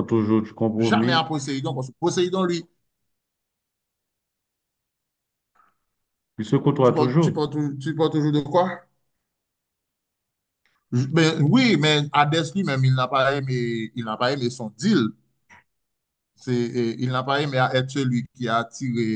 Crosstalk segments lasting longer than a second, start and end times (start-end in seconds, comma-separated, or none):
none